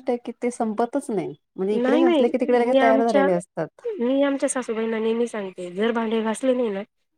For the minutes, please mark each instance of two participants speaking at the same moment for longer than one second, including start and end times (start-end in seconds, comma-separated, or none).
1.8-3.3